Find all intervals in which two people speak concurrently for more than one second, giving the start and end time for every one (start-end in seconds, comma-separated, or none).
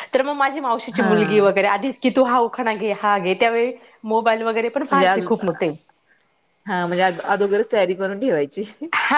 none